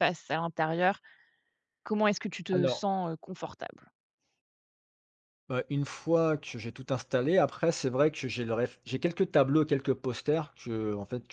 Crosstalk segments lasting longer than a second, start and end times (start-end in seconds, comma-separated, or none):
none